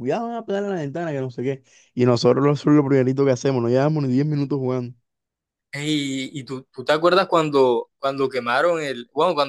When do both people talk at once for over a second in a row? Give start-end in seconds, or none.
none